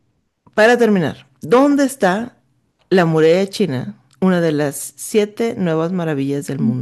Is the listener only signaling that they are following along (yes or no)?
no